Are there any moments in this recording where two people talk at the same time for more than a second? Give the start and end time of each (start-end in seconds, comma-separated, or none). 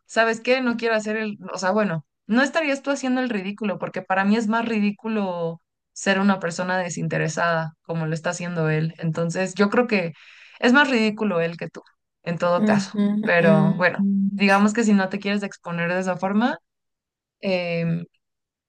12.6-14.6